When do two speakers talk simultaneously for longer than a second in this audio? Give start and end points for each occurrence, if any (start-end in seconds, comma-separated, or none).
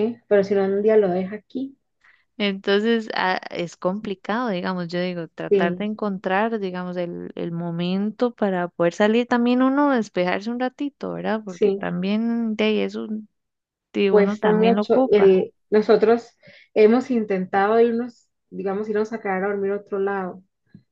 14.1-15.4